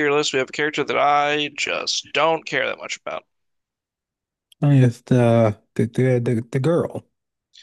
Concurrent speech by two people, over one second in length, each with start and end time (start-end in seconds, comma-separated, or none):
none